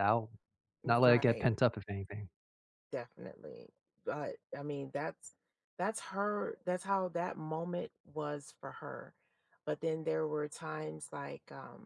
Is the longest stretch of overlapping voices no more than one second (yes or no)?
yes